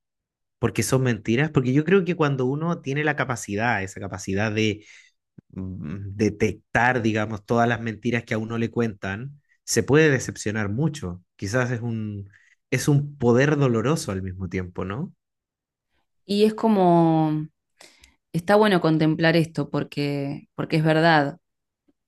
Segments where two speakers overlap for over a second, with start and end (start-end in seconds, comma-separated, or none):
none